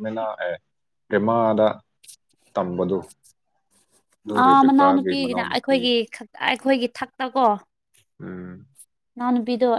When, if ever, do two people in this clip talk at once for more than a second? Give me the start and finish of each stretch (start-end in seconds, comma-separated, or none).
4.4-5.8